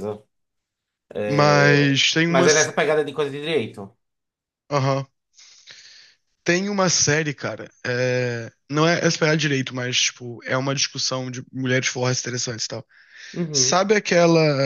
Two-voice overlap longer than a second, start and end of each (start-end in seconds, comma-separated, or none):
1.3-2.7